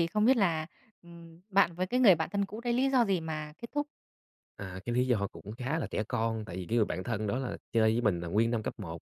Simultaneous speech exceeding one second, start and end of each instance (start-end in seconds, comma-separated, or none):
none